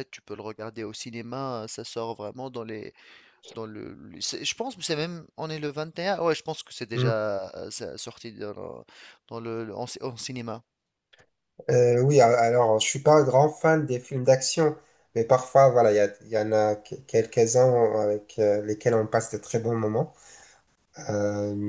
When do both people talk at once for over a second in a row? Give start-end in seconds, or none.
none